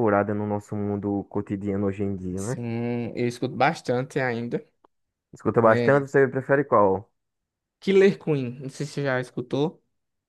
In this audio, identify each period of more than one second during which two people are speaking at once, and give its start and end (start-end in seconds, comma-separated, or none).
none